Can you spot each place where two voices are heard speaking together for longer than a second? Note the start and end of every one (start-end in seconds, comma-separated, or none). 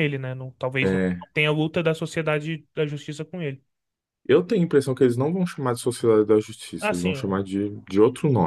none